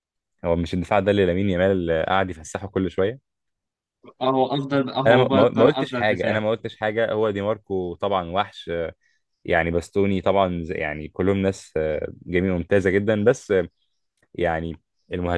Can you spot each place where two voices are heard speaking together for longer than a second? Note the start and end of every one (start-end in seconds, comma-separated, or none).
5.1-6.4